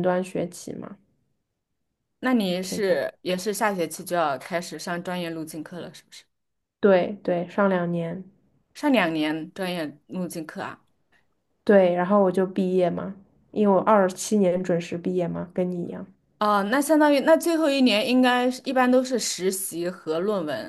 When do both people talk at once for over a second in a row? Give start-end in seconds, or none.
none